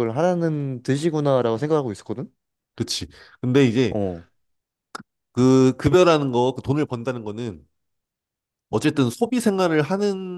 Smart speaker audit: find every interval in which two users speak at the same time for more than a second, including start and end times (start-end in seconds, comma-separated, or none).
none